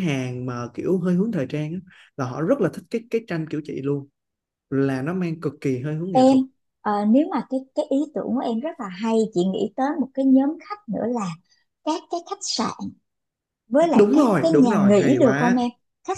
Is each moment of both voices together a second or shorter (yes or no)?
no